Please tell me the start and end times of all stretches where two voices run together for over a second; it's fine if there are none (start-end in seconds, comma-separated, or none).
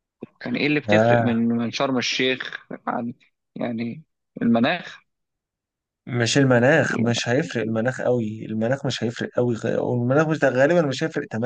none